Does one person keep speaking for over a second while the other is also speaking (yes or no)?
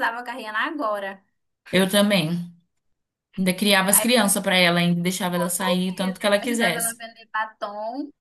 yes